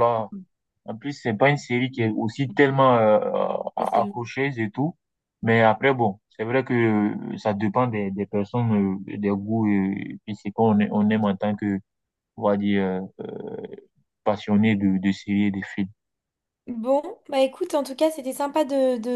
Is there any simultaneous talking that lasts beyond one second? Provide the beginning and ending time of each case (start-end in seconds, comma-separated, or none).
none